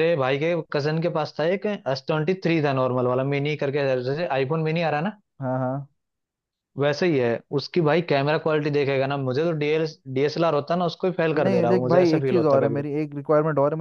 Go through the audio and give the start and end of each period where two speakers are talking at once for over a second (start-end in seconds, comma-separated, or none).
11.4-12.8